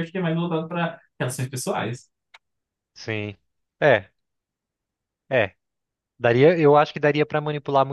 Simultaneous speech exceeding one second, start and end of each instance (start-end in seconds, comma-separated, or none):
none